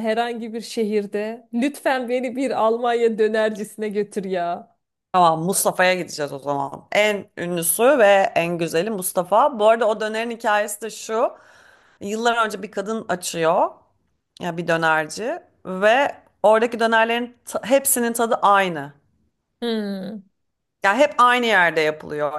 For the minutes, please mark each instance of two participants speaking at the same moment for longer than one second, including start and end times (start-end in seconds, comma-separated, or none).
none